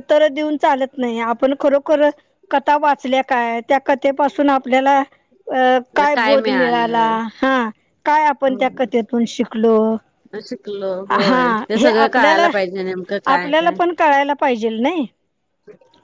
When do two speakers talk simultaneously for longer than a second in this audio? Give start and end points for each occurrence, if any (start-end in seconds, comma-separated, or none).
11.1-12.5